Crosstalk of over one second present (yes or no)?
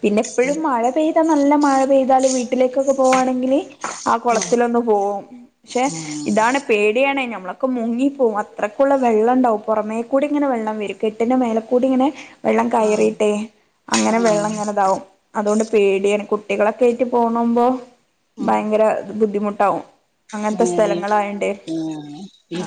no